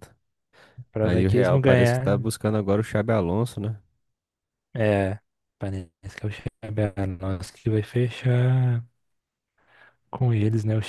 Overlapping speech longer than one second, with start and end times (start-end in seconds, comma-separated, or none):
1.0-2.3